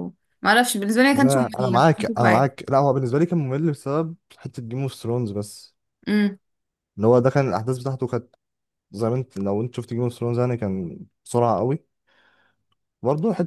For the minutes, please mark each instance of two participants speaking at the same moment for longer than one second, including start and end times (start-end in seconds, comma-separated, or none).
1.1-2.6